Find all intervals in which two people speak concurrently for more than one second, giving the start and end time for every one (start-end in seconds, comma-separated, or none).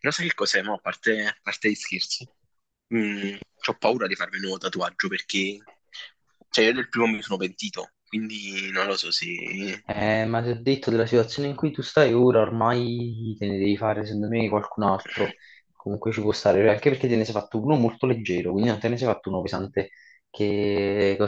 none